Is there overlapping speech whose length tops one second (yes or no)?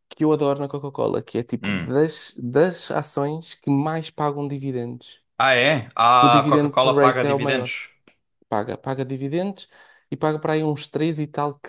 yes